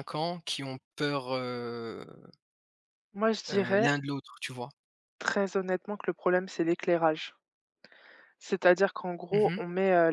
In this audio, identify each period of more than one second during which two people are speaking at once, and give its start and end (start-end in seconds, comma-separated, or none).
none